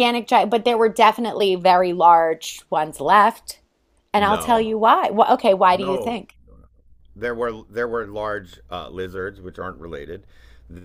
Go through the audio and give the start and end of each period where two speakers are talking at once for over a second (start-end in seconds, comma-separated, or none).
none